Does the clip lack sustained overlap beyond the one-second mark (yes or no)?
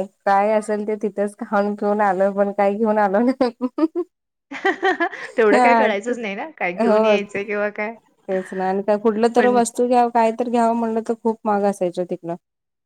yes